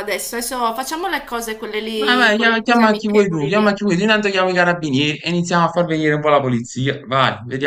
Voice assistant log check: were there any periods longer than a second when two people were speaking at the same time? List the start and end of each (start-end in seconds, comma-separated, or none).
1.9-3.8